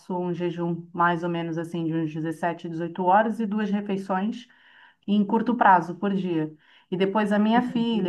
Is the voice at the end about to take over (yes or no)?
no